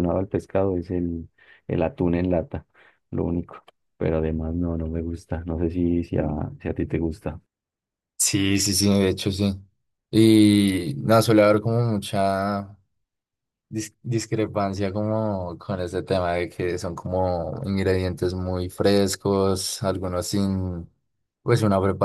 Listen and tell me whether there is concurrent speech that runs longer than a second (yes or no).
no